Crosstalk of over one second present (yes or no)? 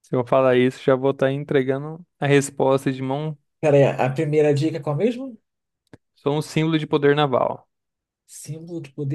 no